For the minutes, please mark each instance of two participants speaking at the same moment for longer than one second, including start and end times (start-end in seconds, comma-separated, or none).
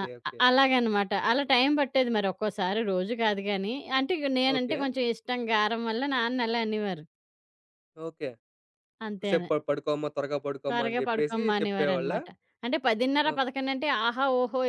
10.7-12.2